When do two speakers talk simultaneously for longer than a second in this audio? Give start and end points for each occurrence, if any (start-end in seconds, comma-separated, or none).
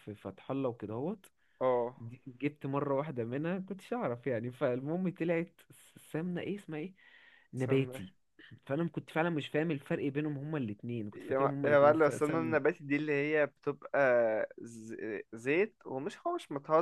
11.1-12.6